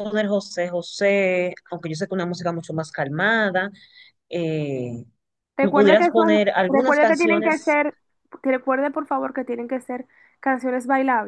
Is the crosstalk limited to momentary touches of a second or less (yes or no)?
no